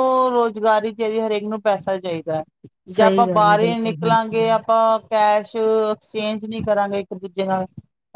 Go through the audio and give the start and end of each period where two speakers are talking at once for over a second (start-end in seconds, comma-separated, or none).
3.0-4.5